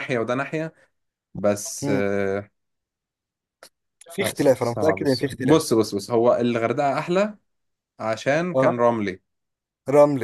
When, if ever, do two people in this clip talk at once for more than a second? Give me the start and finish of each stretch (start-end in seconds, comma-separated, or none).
4.2-5.6